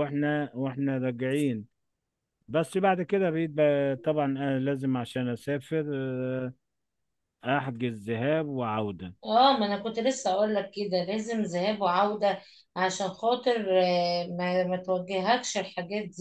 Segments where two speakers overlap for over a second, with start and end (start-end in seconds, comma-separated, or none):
none